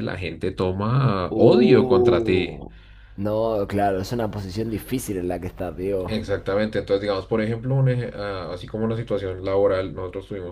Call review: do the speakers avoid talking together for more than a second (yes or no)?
no